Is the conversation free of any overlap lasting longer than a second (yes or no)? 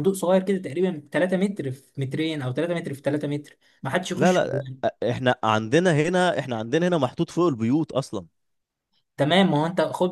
yes